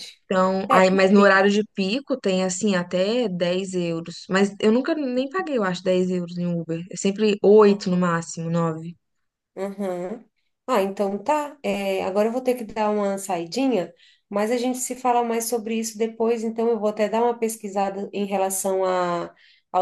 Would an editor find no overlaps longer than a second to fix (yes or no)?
yes